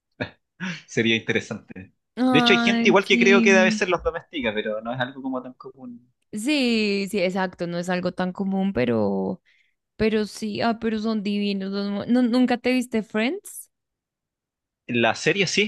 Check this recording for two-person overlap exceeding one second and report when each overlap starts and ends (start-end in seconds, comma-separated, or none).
2.3-3.8